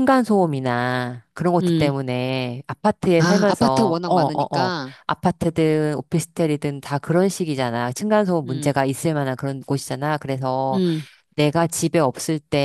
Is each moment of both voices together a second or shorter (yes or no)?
no